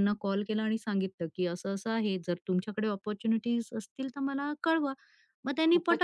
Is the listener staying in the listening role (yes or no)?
yes